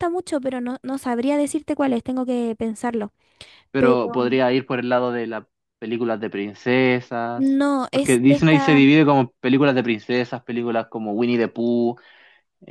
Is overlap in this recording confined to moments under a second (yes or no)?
no